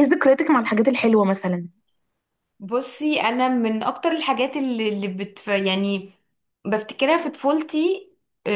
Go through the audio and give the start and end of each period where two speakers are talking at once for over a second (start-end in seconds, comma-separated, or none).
none